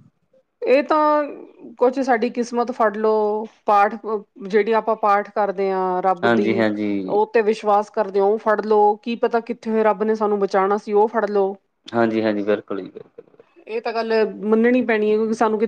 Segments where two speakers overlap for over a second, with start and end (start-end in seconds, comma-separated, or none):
none